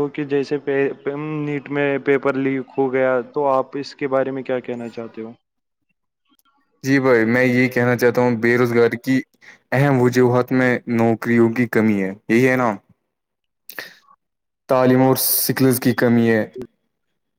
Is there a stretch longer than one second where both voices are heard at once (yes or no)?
no